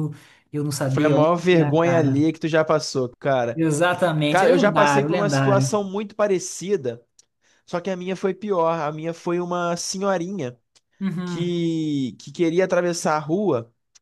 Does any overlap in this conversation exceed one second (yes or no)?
yes